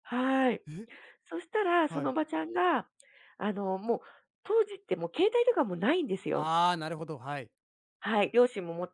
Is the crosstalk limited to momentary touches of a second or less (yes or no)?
yes